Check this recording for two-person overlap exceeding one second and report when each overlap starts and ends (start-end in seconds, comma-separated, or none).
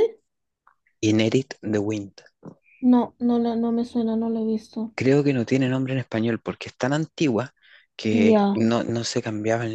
none